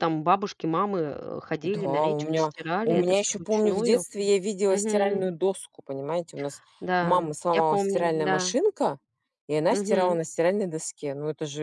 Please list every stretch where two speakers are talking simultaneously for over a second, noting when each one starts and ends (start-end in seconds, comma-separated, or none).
1.6-4.0, 7.0-8.5